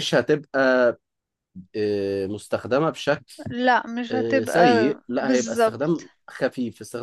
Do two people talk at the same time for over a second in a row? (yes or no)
yes